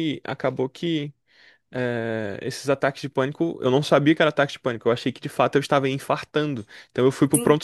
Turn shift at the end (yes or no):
no